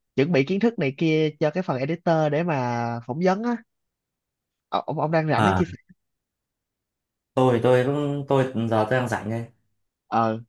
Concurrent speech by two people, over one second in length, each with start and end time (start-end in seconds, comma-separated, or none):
none